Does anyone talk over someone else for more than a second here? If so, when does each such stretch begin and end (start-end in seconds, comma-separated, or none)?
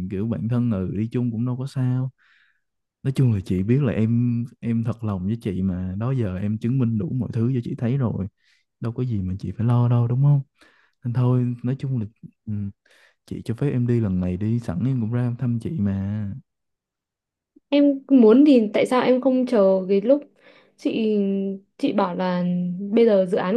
none